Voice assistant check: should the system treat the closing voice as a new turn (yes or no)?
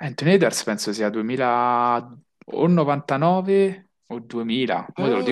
no